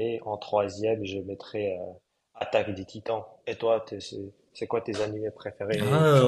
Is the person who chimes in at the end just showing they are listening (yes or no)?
no